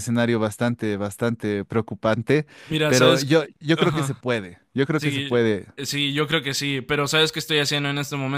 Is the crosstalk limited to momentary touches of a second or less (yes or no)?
no